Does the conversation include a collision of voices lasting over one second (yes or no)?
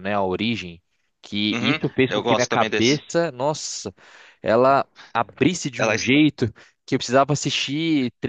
yes